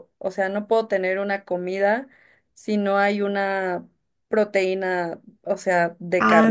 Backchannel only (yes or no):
no